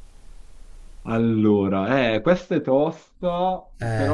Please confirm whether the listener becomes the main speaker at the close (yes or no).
no